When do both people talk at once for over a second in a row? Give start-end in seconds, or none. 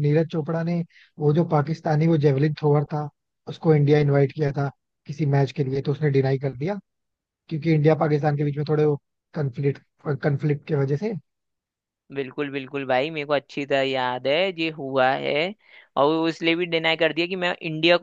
none